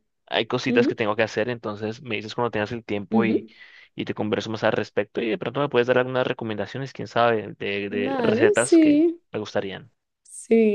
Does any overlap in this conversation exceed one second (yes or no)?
yes